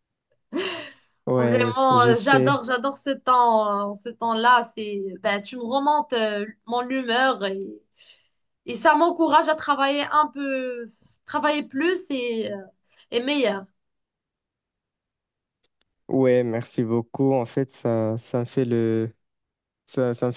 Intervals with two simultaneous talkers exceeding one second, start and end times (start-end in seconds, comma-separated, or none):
1.4-2.6